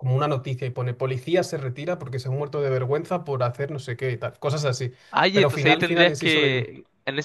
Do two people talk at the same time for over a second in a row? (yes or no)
yes